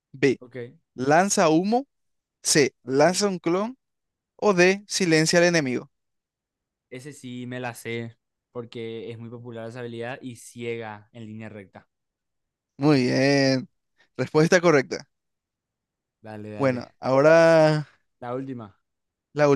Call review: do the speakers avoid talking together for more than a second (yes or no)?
yes